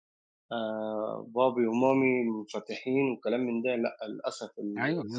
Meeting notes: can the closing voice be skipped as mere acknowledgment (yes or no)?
no